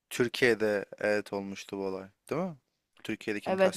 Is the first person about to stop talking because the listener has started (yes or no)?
yes